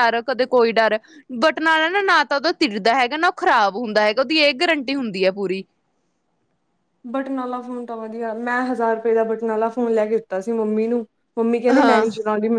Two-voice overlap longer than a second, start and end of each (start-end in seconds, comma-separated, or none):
none